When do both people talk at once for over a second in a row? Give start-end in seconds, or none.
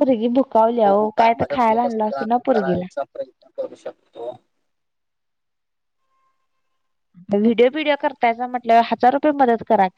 0.8-2.8